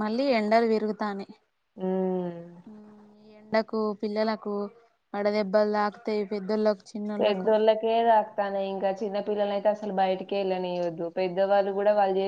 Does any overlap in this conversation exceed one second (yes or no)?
no